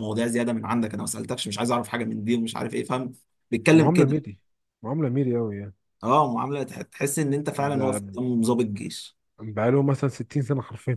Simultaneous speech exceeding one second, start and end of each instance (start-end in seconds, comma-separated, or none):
none